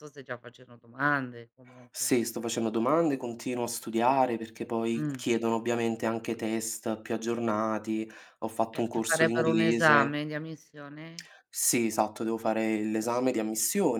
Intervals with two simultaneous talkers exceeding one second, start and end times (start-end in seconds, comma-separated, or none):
8.7-10.2